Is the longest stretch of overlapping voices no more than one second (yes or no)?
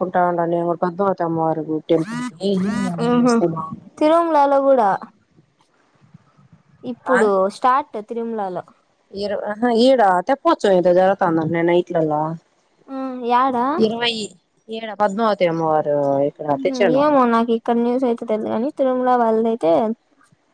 yes